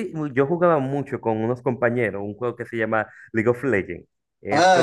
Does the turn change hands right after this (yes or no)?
yes